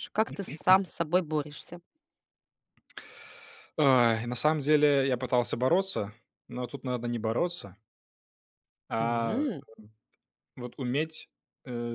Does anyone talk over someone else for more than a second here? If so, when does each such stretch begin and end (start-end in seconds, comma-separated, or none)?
none